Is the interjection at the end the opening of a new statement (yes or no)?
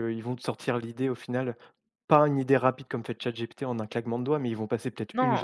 yes